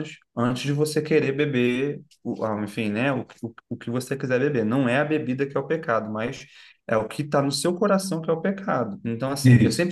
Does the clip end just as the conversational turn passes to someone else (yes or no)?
no